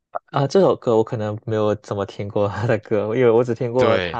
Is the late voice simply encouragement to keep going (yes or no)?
yes